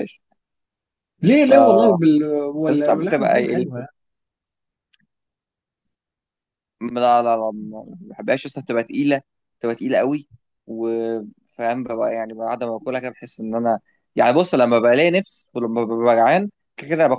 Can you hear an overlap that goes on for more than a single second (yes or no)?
yes